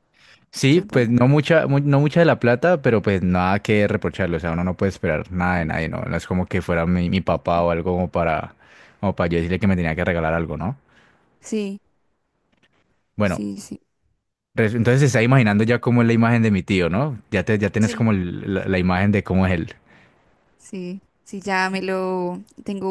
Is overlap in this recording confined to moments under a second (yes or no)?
yes